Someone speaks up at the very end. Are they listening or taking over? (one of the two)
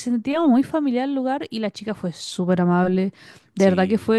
listening